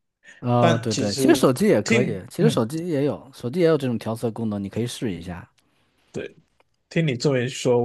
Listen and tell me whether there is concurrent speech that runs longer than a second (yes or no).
yes